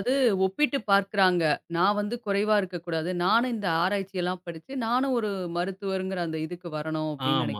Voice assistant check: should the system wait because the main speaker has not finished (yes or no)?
no